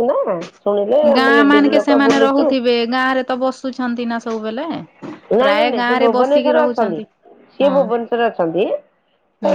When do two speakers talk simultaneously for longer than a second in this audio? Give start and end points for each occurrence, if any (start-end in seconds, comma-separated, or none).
5.4-7.0